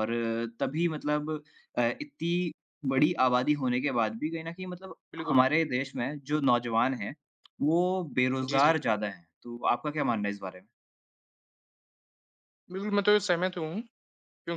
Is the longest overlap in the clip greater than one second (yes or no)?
no